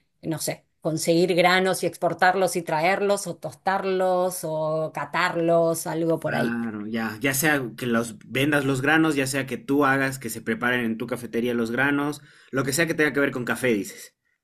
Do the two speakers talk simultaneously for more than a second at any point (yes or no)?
no